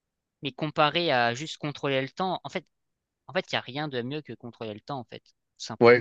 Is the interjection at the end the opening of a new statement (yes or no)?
yes